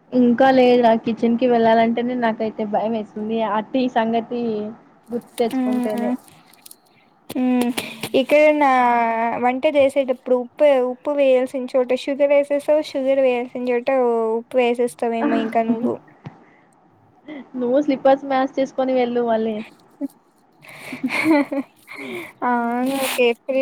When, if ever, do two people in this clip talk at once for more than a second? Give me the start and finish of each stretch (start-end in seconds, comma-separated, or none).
none